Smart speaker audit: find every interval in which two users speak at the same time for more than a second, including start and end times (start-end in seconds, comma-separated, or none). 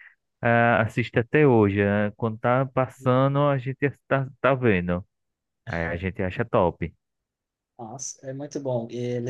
none